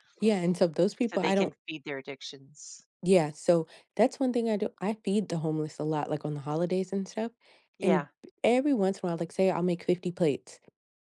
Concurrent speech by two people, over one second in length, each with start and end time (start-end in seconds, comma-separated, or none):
none